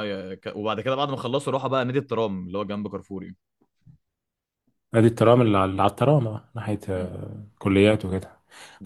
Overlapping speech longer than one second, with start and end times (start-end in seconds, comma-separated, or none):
none